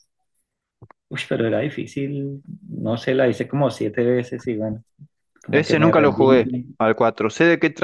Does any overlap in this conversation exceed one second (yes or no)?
yes